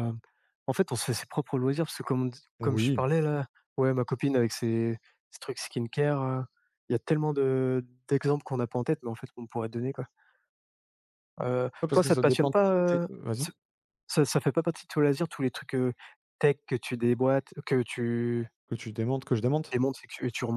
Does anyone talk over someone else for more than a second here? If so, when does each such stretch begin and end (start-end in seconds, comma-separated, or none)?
11.8-13.5